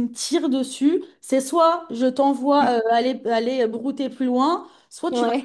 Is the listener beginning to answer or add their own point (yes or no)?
no